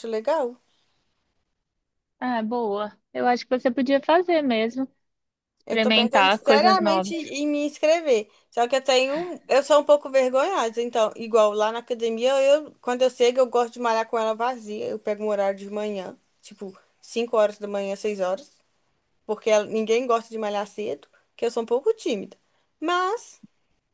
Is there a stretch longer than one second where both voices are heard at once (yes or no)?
yes